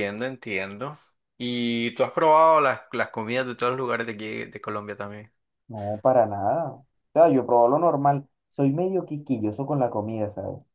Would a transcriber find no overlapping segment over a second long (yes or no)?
yes